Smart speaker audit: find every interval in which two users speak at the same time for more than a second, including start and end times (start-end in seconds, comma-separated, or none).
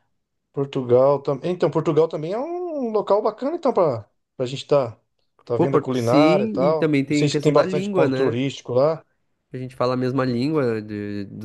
5.6-8.4